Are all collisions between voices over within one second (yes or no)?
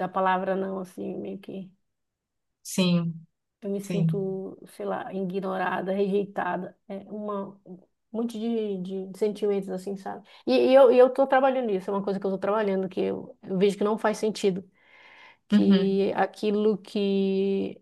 yes